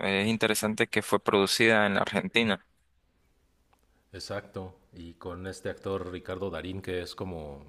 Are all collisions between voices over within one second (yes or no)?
yes